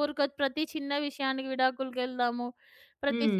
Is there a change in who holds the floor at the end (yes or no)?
no